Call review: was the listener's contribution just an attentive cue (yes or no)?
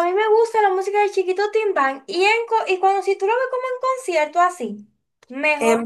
no